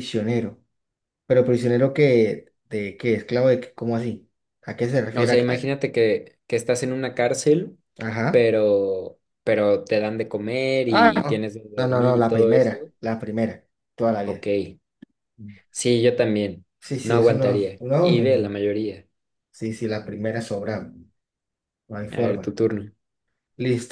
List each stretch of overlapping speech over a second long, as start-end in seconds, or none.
10.9-12.9, 17.0-18.6